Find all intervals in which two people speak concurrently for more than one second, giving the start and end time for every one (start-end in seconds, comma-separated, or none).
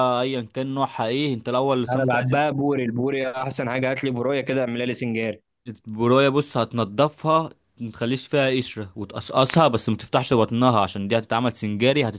none